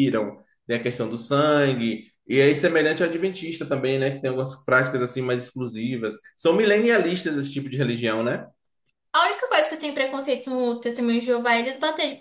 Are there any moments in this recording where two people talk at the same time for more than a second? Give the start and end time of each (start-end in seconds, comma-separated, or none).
none